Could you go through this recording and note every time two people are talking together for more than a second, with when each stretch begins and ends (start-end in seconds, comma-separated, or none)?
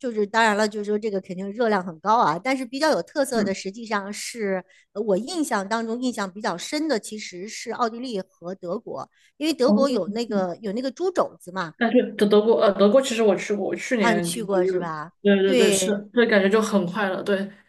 14.0-16.0